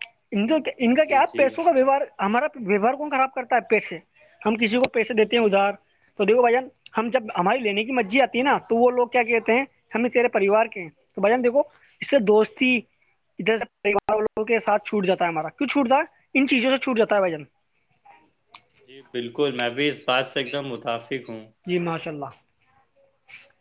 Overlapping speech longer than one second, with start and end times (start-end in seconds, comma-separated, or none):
none